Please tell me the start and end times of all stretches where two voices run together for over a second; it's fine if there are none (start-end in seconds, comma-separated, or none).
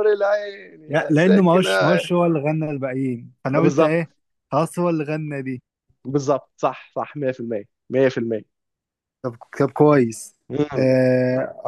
0.9-2.1